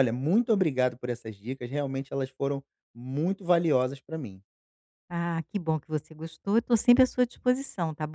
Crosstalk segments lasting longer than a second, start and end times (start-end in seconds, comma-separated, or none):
none